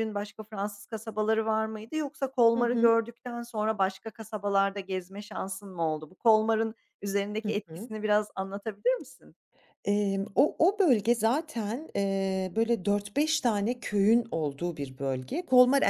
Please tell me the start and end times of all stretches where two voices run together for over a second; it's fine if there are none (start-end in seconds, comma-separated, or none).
none